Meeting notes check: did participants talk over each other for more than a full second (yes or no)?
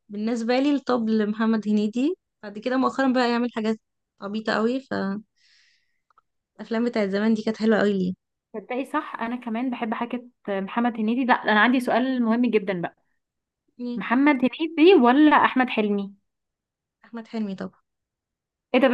no